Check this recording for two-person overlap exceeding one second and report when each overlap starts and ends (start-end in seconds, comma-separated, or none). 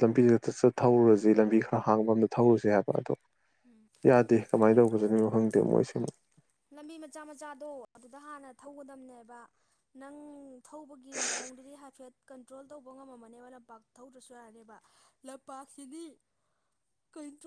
none